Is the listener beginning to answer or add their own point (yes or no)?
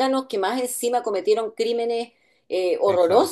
yes